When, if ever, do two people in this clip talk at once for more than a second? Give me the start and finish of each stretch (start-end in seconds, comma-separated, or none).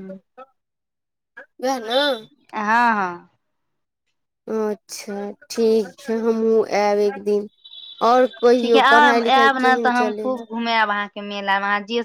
none